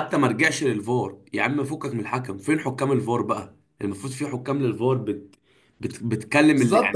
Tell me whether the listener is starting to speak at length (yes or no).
yes